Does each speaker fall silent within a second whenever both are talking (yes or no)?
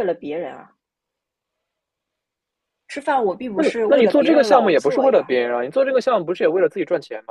no